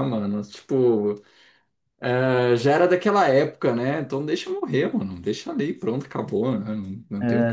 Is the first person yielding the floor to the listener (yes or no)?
yes